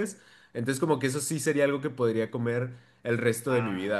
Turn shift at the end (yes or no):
yes